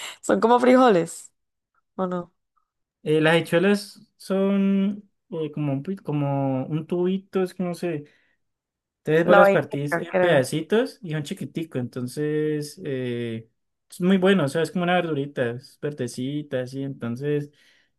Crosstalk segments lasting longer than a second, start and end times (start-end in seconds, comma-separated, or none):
9.2-10.5